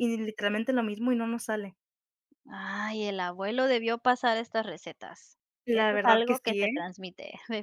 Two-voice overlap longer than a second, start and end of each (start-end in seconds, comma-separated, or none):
5.7-6.9